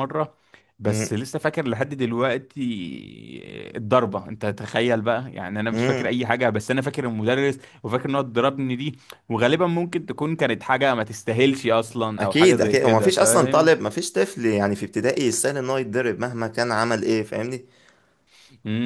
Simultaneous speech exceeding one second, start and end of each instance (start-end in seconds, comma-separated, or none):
12.2-13.9